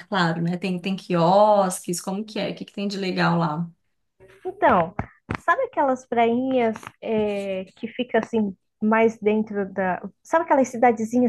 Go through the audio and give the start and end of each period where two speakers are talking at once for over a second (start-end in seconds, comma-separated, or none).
none